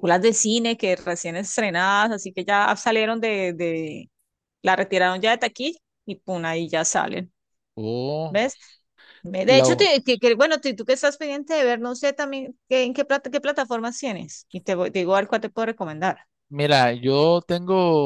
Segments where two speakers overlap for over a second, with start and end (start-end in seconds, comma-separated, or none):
none